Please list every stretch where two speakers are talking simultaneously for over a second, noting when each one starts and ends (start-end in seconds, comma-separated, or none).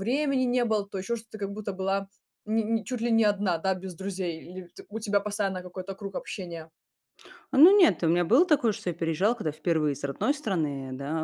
none